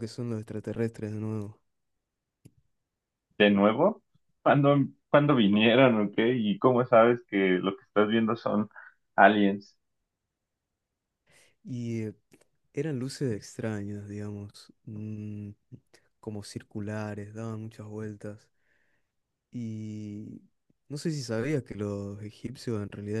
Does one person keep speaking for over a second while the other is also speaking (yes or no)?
no